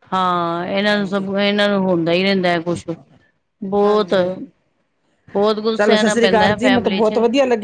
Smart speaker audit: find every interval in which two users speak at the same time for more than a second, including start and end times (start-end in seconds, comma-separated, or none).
5.8-7.1